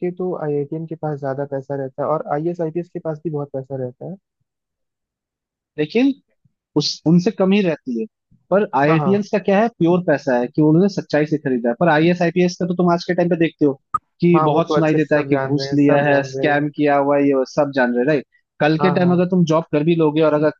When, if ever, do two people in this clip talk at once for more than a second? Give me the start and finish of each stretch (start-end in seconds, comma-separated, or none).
14.3-16.7